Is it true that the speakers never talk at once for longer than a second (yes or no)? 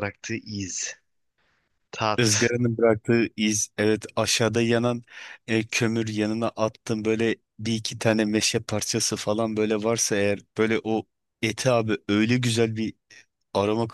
yes